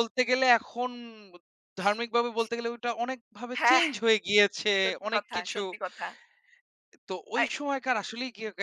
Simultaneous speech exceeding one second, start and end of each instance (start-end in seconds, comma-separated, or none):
none